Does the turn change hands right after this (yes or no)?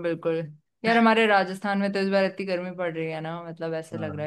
no